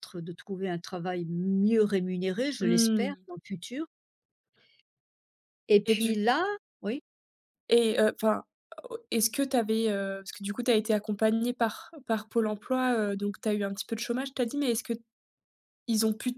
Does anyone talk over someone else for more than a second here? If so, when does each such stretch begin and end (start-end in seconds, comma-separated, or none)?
none